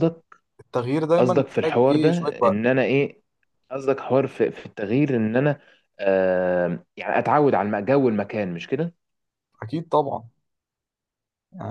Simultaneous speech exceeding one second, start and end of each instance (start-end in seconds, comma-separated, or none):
1.2-2.6